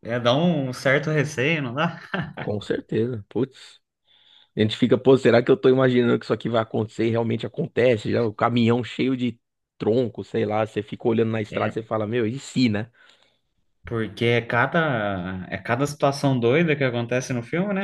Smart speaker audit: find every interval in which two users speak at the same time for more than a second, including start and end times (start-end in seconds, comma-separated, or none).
none